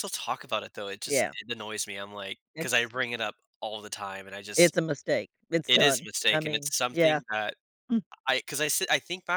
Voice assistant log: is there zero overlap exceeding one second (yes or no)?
no